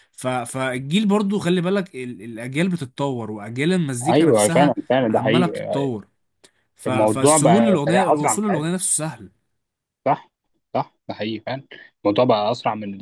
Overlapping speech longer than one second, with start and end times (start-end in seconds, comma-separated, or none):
4.1-5.6, 6.9-8.4